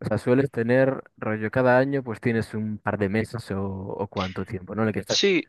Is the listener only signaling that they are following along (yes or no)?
no